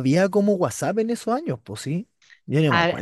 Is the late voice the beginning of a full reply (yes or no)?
yes